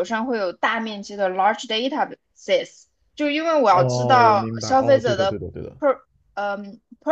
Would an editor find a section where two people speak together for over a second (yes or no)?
yes